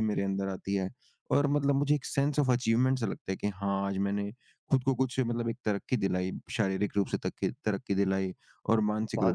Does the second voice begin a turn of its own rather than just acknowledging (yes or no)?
no